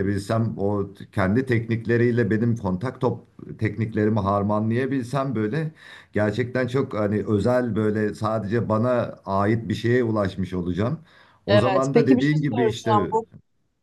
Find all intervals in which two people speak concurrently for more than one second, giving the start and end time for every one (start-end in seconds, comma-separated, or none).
11.5-13.1